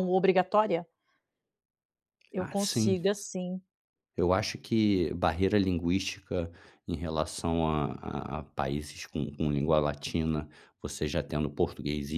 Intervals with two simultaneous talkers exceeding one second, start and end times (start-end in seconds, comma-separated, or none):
none